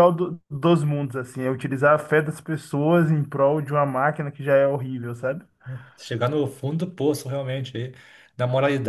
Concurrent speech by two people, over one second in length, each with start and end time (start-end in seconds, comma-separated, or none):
none